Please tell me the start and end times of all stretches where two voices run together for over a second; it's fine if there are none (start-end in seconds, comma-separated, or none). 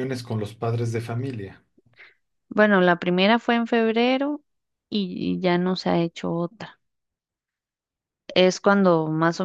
none